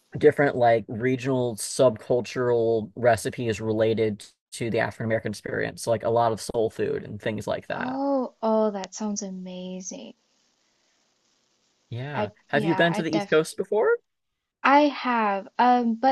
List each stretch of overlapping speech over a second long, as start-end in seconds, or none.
12.1-13.4